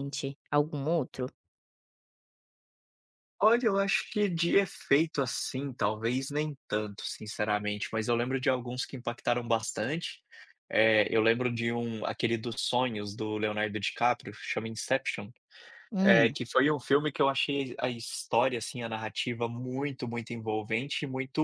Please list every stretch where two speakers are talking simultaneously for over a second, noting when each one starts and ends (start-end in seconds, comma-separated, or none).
none